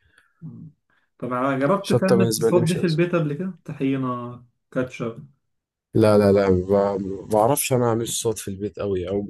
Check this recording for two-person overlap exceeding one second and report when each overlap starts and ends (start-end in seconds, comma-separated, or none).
1.8-3.0